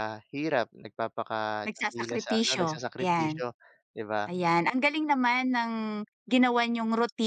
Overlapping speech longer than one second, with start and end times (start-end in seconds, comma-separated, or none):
1.7-3.4